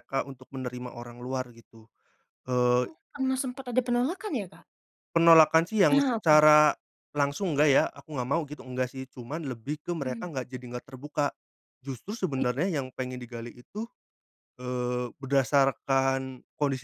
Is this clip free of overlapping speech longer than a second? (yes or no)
yes